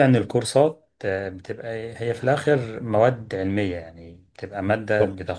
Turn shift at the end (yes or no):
no